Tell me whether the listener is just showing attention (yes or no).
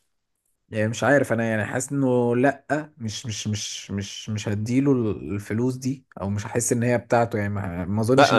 no